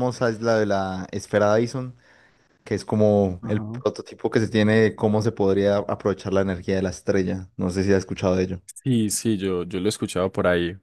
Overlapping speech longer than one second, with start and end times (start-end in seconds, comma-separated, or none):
none